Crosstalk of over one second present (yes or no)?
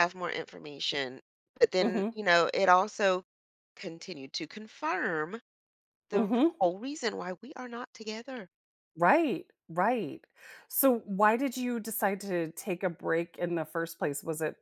no